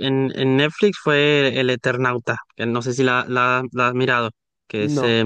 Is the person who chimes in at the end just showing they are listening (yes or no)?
no